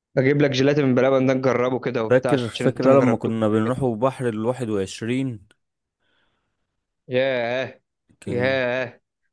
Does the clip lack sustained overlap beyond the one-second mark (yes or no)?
no